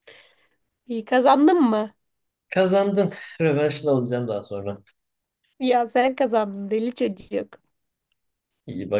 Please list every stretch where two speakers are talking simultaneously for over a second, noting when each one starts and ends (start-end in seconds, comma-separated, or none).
none